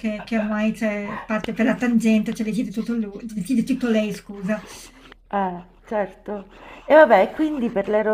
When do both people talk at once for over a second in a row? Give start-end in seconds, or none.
none